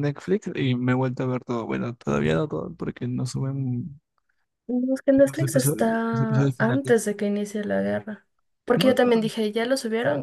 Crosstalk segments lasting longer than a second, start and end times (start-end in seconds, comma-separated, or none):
5.2-7.0